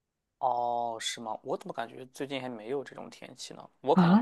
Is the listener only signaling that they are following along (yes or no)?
no